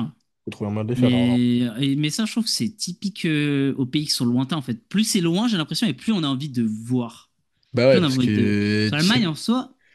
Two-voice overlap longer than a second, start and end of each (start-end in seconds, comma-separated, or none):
7.9-9.3